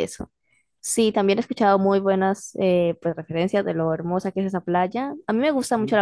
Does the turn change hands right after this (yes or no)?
no